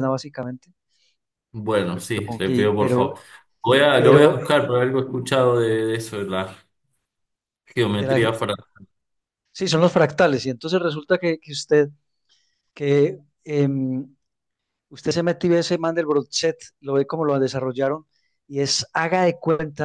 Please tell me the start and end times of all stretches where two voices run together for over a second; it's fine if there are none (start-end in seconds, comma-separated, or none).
1.9-3.1